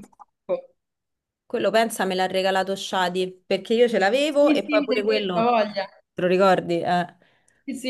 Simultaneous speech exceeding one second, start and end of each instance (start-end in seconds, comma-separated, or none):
4.3-5.6